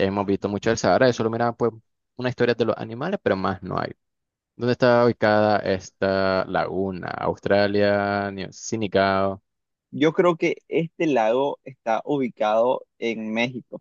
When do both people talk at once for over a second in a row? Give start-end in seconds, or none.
none